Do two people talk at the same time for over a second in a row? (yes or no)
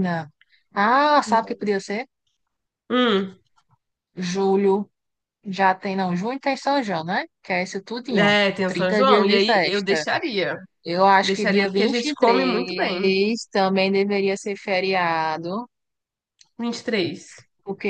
yes